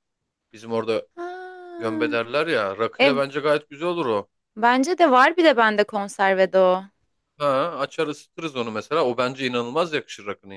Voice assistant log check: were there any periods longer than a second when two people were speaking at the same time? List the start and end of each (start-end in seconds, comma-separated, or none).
none